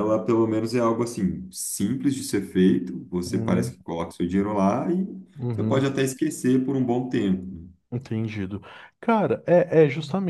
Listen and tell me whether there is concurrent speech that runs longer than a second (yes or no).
no